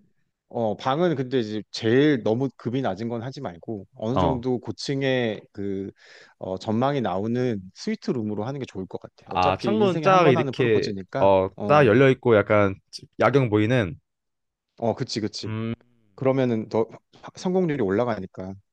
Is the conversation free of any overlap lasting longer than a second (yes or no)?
no